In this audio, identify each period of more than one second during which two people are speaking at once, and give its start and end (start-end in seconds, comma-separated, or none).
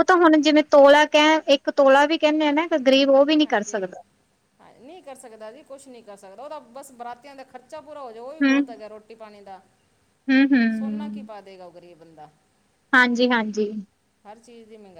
none